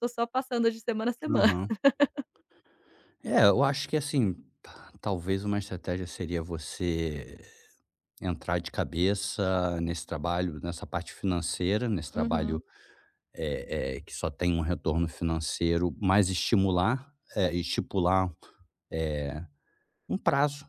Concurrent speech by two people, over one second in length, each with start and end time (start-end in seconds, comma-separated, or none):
none